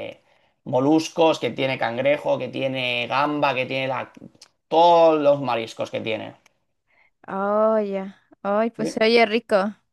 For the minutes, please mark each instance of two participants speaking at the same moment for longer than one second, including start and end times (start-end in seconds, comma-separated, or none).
none